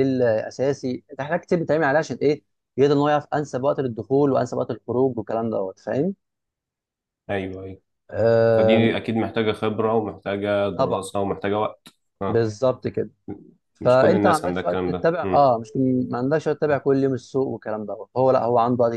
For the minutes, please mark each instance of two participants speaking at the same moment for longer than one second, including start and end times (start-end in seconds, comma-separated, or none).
13.8-15.5